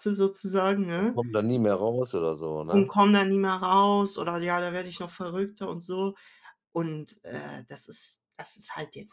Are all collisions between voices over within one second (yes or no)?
yes